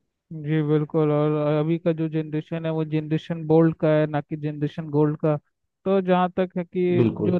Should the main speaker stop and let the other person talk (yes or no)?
no